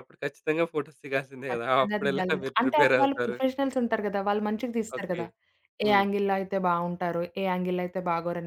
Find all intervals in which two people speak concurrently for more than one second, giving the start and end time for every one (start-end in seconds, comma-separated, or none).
1.5-3.4